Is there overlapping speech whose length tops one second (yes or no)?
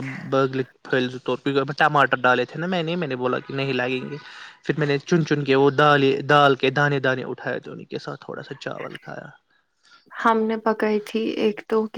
no